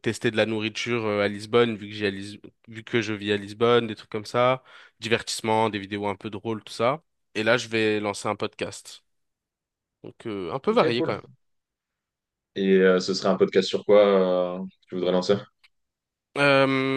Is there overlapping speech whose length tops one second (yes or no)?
no